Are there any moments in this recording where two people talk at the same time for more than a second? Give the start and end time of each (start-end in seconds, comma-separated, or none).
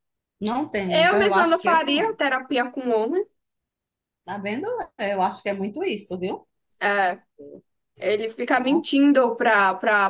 0.9-2.1